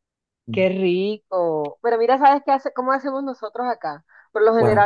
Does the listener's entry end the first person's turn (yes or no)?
no